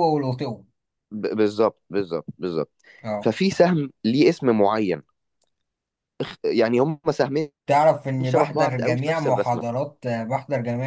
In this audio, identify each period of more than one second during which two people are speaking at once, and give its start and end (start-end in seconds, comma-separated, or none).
8.2-9.6